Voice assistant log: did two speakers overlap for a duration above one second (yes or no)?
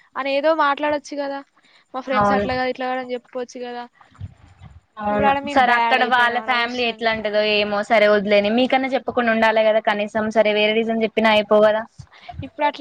yes